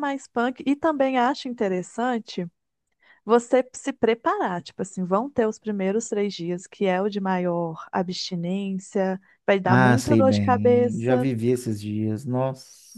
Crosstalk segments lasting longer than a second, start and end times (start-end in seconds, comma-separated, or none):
9.6-11.3